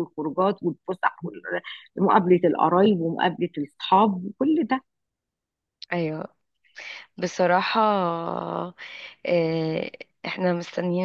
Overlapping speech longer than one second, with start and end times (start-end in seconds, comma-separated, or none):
none